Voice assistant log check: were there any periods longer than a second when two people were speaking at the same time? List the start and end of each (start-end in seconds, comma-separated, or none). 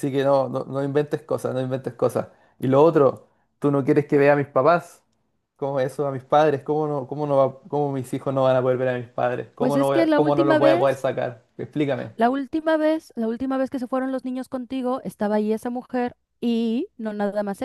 9.6-11.0